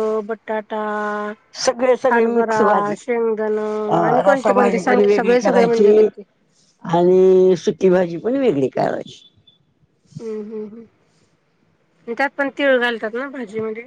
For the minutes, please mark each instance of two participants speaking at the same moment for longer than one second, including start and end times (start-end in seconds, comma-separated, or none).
4.1-5.9